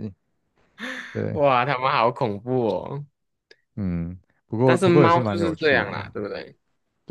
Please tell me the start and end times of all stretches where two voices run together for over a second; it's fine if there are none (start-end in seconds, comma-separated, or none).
4.6-5.9